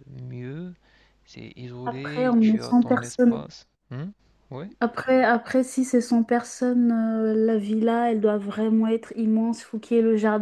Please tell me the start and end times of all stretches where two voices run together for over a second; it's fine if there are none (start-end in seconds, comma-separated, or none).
1.8-3.4